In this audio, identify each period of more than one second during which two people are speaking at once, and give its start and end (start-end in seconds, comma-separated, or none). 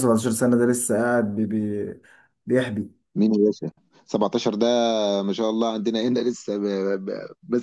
none